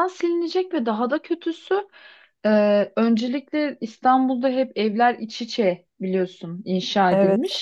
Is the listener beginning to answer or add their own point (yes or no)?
no